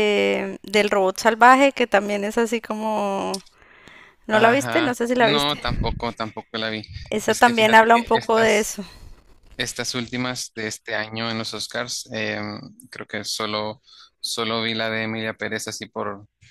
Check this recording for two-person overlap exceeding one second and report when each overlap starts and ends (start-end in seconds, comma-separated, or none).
4.3-5.6, 7.2-8.7